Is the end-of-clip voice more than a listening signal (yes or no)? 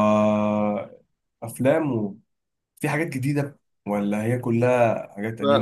yes